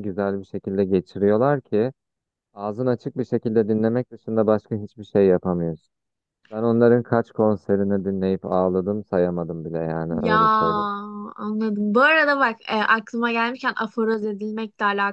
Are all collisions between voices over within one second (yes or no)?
yes